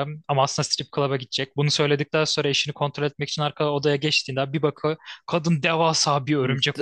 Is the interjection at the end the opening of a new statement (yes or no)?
yes